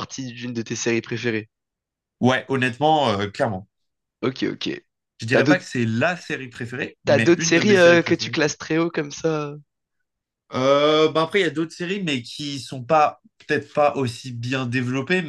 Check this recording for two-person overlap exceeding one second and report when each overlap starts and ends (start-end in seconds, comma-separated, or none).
7.0-8.3